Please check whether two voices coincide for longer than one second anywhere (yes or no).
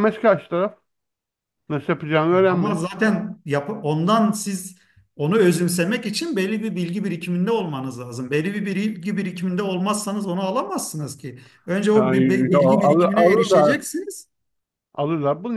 yes